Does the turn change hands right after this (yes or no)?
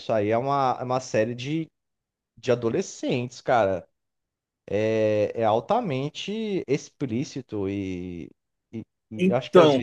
no